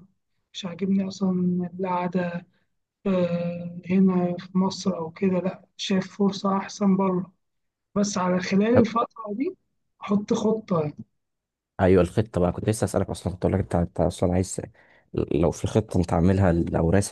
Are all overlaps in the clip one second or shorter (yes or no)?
yes